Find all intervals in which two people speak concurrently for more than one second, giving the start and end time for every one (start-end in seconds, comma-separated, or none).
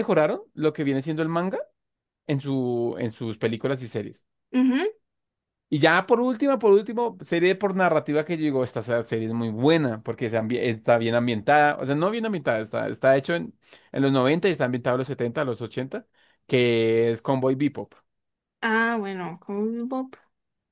none